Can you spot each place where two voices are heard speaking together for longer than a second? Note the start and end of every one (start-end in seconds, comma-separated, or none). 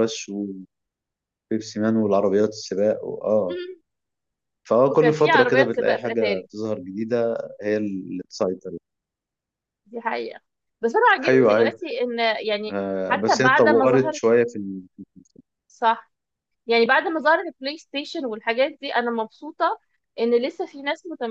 4.9-6.5, 12.7-14.2